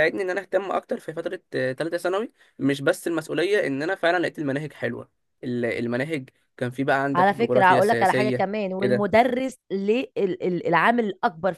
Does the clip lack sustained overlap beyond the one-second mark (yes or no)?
no